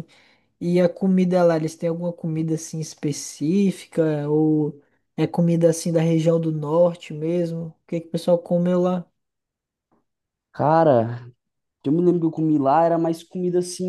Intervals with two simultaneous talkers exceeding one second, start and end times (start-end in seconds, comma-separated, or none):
none